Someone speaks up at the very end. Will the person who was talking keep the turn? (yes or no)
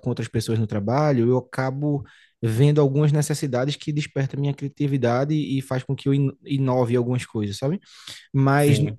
yes